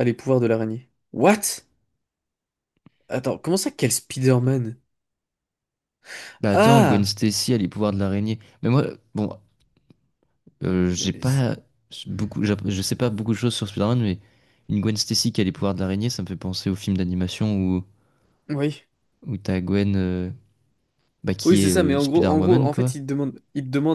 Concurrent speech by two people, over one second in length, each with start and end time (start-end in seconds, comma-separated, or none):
21.4-22.9